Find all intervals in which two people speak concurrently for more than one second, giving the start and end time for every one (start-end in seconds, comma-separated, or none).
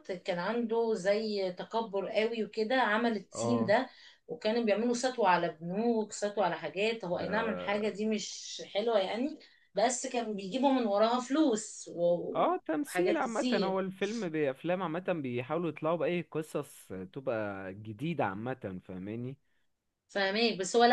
12.3-13.8